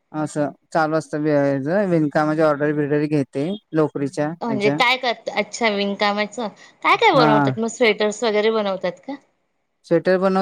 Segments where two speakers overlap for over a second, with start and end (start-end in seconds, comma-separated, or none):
none